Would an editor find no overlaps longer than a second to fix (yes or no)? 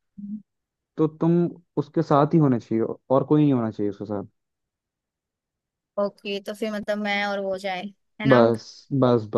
yes